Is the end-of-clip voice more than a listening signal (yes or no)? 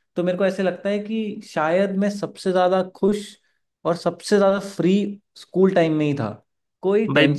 no